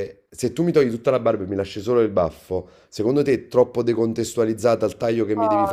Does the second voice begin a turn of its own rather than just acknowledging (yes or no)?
yes